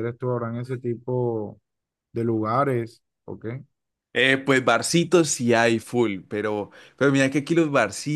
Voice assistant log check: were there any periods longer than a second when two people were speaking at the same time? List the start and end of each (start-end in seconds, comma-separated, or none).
none